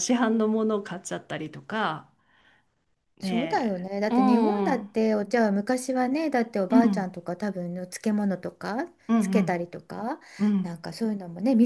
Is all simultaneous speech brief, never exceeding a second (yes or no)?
no